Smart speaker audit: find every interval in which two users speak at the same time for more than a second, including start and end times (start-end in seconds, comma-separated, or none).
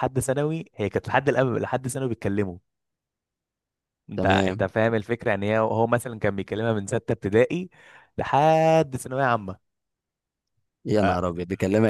none